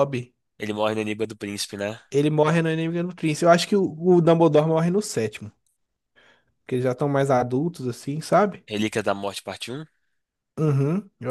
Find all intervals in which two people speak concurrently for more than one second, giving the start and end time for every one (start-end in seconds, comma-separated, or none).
none